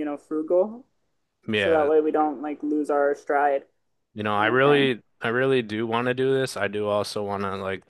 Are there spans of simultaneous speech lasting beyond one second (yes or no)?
no